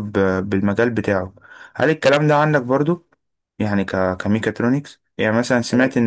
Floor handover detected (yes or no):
no